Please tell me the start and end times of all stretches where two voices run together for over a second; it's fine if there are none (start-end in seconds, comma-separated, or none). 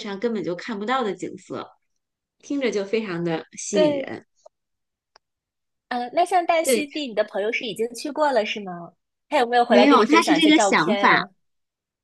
9.7-11.2